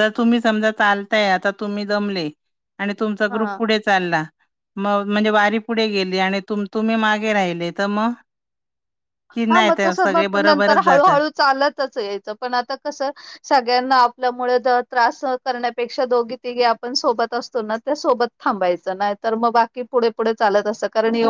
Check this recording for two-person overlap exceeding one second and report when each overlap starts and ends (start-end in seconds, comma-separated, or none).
9.5-11.1